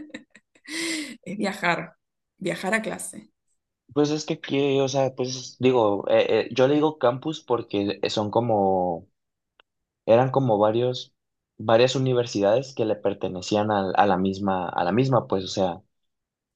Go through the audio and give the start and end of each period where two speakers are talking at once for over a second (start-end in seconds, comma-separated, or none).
none